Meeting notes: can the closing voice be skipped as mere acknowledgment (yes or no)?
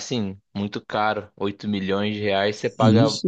yes